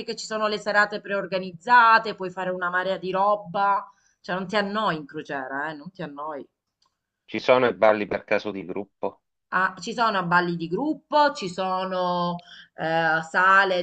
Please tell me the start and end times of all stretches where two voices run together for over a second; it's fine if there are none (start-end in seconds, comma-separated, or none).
none